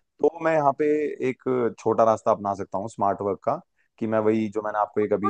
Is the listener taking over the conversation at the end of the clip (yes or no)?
yes